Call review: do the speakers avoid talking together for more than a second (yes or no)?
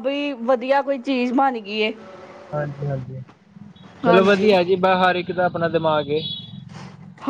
yes